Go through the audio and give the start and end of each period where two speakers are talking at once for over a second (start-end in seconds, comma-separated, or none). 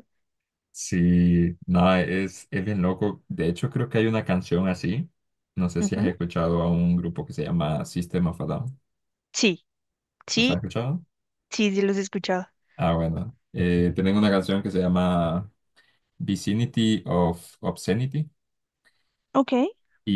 none